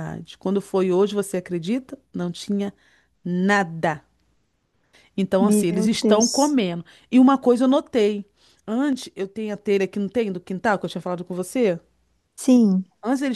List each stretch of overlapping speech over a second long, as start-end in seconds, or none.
5.4-6.6